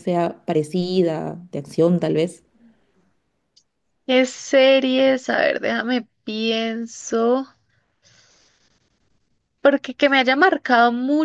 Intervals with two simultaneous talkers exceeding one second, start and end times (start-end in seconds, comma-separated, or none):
none